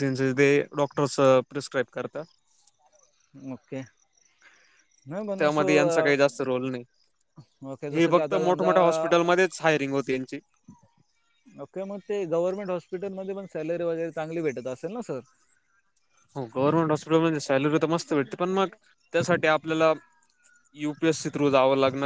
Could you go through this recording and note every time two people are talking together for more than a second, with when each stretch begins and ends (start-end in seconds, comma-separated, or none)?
7.9-9.1